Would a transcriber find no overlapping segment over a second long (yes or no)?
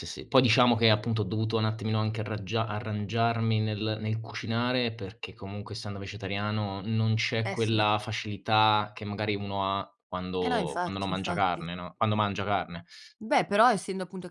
no